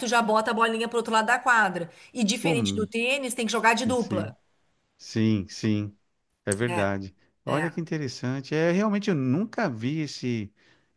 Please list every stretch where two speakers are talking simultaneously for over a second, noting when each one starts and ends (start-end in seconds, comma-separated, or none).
none